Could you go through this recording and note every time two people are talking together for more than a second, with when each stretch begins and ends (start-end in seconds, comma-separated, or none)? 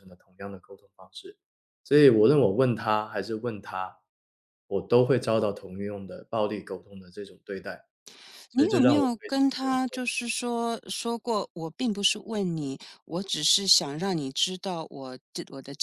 8.5-10.0